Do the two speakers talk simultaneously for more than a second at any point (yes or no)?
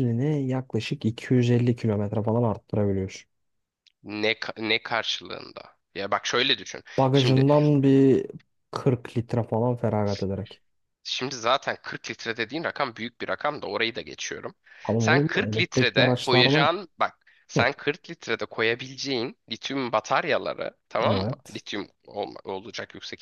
yes